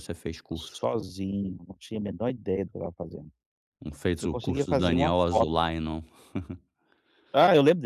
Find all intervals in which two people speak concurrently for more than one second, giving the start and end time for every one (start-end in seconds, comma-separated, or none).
4.2-5.6